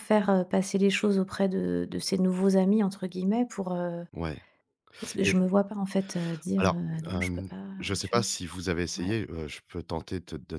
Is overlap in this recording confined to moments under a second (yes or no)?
no